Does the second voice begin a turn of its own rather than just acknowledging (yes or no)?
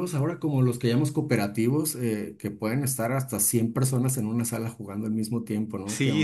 yes